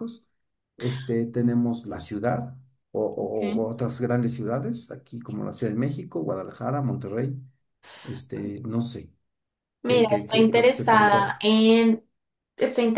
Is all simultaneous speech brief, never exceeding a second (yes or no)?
no